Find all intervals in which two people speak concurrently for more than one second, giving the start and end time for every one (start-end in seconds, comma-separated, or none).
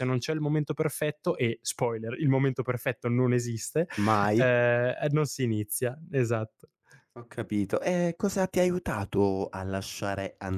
none